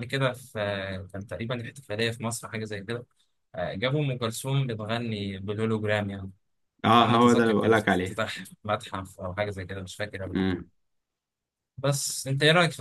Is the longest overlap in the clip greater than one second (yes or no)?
yes